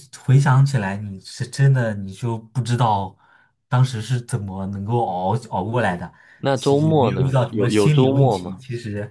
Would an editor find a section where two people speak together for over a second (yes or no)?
yes